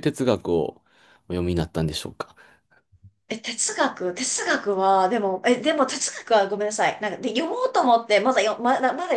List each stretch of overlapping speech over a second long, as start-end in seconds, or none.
none